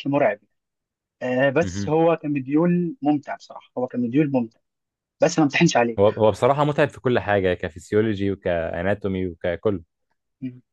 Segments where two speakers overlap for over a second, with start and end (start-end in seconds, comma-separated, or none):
none